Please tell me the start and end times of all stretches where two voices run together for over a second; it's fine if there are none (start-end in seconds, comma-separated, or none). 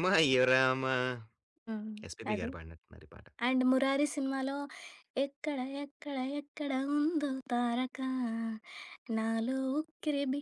none